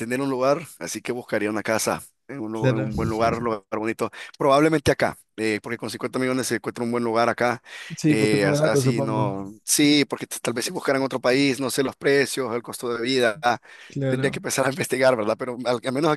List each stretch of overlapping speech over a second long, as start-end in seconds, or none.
8.1-9.3